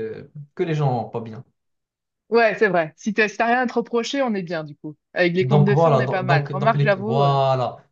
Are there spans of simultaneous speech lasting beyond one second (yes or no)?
yes